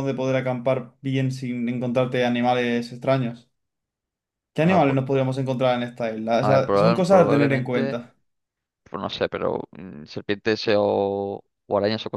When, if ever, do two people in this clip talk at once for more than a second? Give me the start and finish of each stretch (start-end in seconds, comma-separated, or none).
6.4-8.0